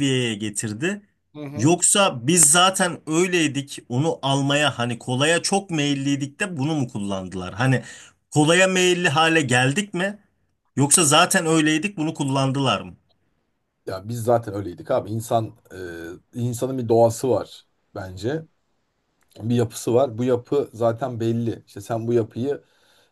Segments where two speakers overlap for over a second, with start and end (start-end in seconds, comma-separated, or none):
none